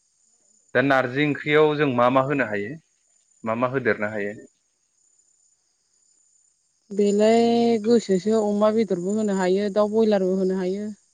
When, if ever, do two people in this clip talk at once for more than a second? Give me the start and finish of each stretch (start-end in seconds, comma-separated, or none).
none